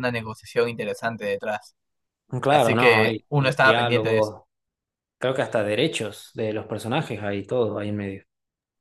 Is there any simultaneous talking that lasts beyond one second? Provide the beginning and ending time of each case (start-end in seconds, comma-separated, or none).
2.5-4.3